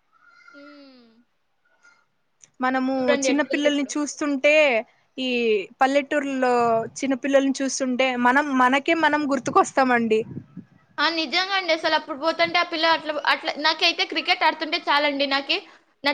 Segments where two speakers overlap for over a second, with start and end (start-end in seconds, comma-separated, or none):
none